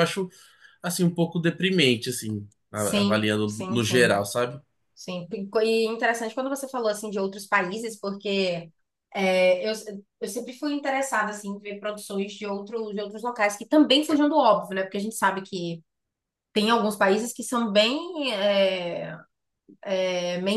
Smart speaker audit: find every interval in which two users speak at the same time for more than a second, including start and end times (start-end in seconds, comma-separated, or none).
2.7-4.2